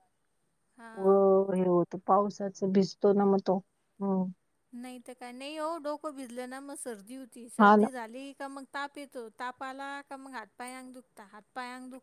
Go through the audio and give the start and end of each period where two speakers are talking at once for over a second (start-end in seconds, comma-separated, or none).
none